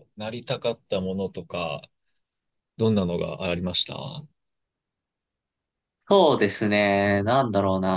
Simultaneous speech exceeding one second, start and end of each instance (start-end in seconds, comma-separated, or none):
none